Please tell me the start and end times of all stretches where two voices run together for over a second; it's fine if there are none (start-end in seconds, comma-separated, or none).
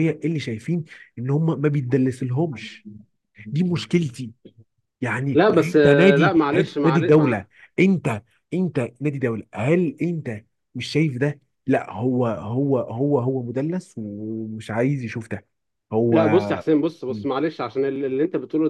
5.3-7.4